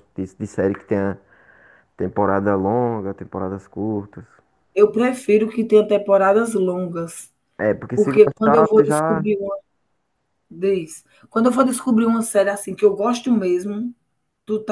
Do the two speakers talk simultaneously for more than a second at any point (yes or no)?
yes